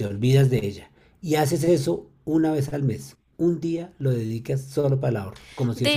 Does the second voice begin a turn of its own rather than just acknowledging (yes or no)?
yes